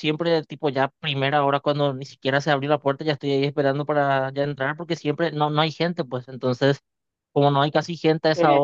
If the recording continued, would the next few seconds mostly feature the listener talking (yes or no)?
no